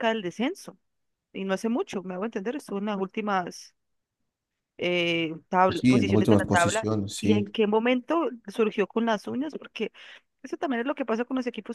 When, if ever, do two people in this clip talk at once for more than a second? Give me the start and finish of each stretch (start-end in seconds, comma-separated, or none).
5.7-7.4